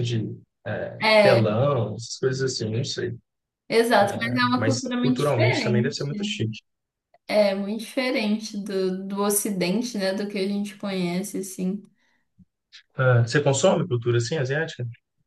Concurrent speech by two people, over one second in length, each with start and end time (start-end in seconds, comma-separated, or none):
4.0-6.0